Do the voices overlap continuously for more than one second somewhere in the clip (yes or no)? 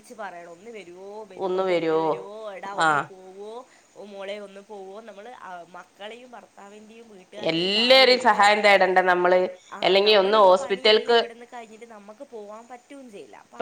no